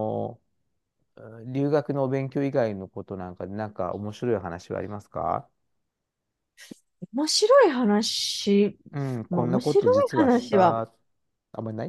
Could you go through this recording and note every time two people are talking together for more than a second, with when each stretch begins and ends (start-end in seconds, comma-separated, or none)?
9.3-10.8